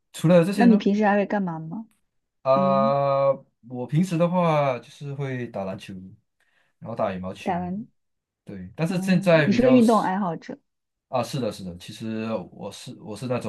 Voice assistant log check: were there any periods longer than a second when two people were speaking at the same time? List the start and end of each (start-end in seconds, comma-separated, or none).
8.9-10.1